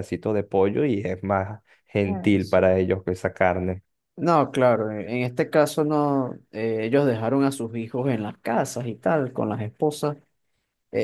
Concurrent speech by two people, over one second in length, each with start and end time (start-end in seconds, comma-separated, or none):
none